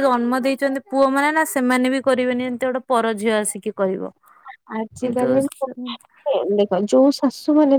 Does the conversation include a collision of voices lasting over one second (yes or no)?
no